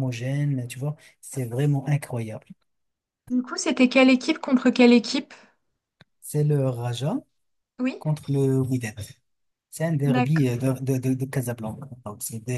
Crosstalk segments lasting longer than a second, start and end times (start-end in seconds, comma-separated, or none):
none